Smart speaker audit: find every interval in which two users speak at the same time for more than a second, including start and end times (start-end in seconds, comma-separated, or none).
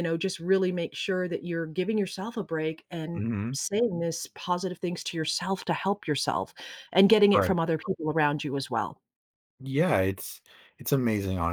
none